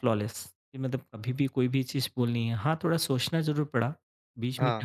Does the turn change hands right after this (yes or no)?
no